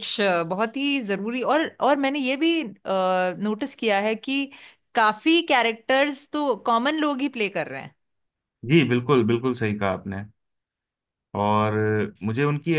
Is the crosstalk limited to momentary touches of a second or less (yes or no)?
yes